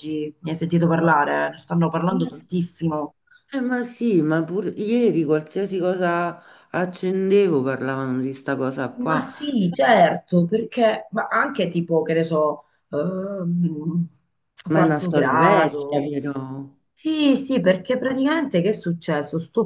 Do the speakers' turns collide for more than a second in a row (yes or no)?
yes